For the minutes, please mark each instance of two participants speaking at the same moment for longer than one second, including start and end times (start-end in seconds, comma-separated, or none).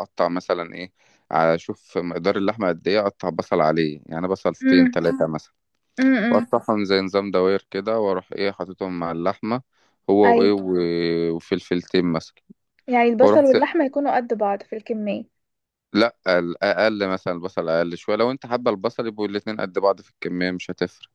none